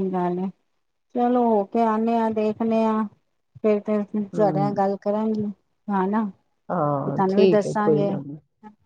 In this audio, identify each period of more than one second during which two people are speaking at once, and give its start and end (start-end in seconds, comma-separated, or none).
6.7-8.1